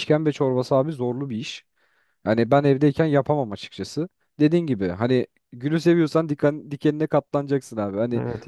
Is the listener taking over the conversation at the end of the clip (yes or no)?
no